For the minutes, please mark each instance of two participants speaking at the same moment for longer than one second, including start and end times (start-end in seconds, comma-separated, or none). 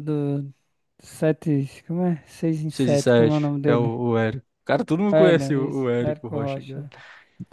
2.7-3.9, 5.1-6.9